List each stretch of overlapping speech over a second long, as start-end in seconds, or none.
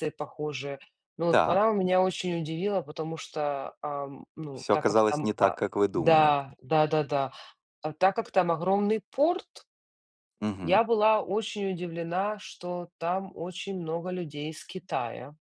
4.5-6.3